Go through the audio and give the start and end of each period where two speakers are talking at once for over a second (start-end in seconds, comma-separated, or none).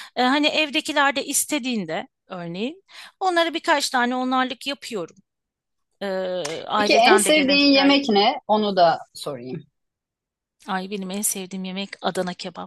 6.8-8.0